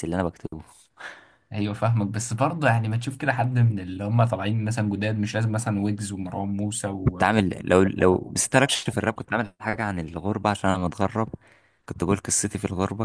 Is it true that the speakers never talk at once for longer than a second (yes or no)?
yes